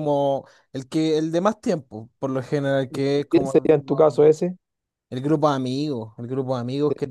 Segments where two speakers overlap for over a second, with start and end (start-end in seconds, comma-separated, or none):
2.9-4.2